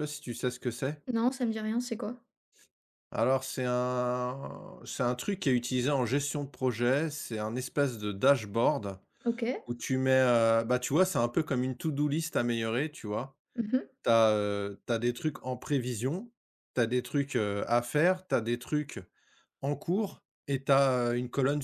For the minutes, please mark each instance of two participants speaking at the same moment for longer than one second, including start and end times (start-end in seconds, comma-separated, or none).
none